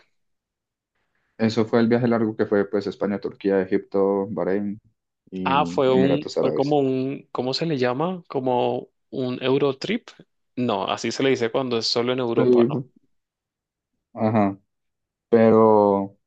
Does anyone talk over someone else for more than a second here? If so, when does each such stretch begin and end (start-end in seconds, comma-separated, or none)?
5.4-6.8